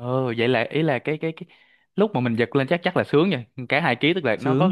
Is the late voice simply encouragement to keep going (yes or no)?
yes